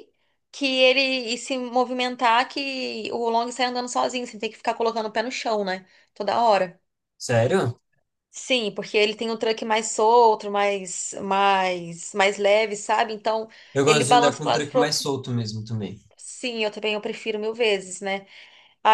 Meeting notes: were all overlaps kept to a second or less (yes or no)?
no